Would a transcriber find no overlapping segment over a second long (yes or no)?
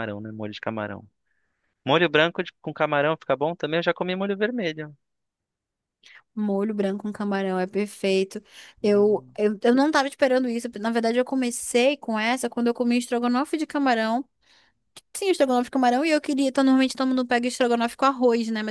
yes